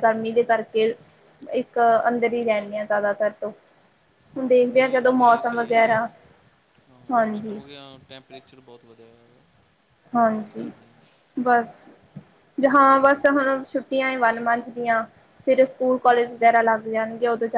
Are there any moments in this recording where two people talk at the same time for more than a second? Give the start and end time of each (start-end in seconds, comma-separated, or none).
4.7-6.0